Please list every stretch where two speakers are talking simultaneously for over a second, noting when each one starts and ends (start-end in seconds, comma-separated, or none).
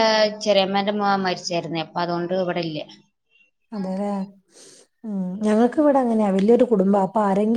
none